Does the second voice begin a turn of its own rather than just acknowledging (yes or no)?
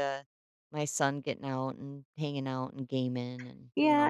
yes